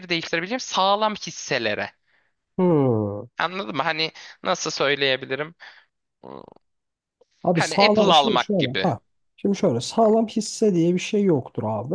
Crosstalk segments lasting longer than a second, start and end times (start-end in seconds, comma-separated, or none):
7.5-8.9